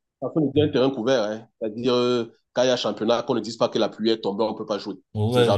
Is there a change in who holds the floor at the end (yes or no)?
yes